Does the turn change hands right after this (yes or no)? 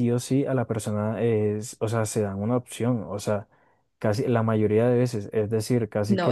yes